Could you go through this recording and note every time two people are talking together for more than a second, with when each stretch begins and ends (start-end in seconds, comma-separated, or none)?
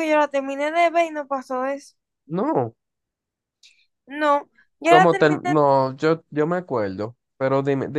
none